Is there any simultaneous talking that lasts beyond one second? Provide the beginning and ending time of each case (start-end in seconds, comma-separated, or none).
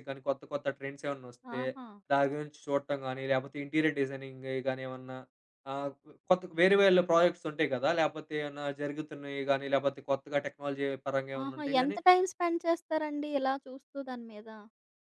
none